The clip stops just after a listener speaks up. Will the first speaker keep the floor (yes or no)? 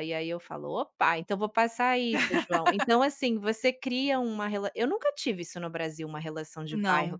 yes